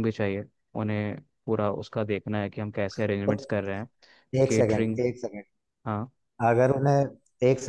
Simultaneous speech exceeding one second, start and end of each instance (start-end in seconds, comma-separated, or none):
none